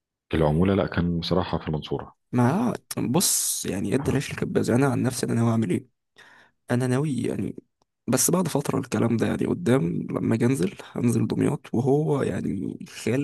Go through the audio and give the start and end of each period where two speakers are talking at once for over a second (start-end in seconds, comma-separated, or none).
none